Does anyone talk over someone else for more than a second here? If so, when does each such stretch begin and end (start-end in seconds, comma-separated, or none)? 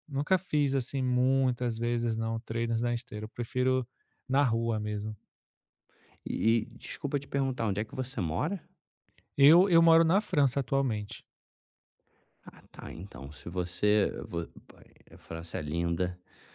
none